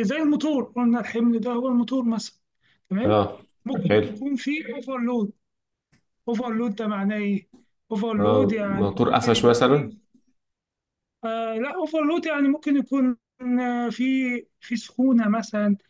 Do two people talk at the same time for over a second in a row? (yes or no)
yes